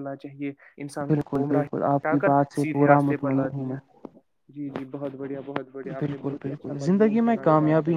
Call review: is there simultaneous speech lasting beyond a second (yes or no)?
yes